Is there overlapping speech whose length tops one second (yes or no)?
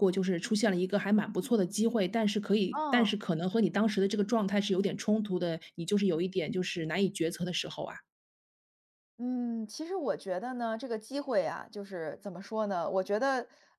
no